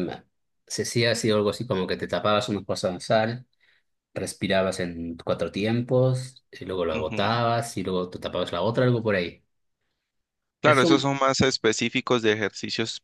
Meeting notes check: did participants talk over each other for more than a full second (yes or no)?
no